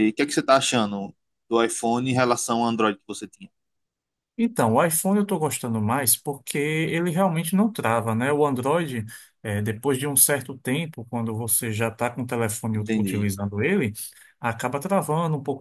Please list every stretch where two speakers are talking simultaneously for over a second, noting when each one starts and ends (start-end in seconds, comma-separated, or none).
none